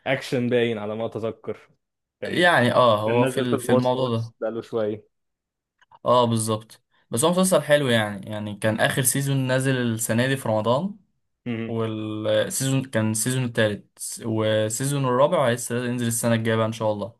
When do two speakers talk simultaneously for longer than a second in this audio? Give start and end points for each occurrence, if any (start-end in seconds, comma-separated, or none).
3.1-4.3